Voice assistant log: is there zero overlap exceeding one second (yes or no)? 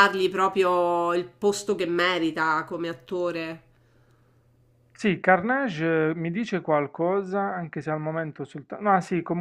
yes